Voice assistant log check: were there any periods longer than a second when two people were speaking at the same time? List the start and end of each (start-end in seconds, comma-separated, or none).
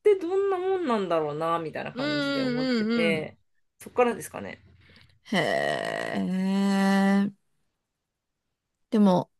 1.9-3.3